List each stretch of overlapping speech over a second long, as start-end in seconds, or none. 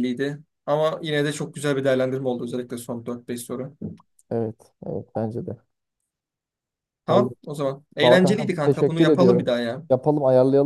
8.0-9.5